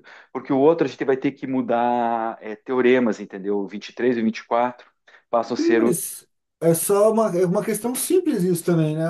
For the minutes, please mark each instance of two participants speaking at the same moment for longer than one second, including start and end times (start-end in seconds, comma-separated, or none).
none